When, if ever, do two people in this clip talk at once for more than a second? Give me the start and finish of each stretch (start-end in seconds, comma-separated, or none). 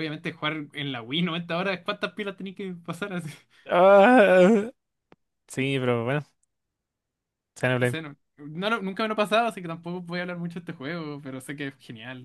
none